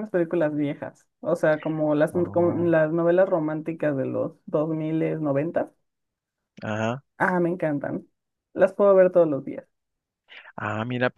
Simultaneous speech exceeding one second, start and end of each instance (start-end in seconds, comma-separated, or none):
none